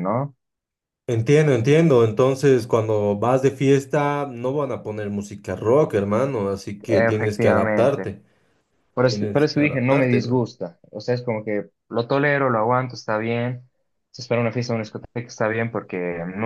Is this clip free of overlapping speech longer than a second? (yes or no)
no